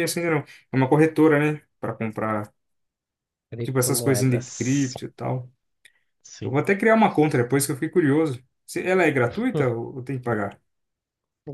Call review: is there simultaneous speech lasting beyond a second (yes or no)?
yes